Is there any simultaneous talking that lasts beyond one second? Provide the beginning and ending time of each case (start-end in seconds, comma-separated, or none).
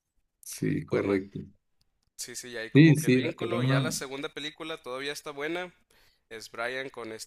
2.7-4.0